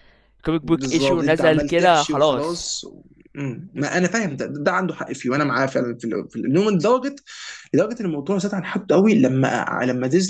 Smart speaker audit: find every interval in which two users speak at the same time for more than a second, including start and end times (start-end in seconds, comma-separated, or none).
0.6-2.7